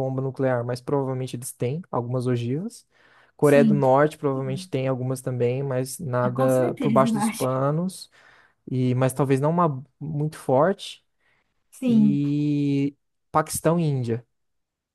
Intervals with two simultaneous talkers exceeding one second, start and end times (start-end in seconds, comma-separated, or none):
6.2-7.5